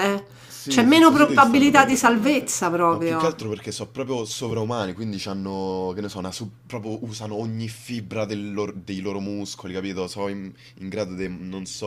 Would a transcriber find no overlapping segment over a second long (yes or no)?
no